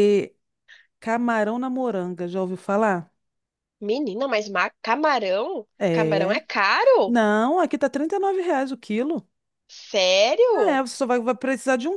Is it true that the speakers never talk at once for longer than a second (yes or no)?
yes